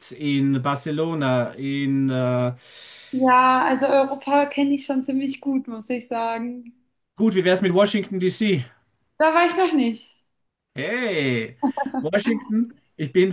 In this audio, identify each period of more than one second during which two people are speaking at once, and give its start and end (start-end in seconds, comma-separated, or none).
none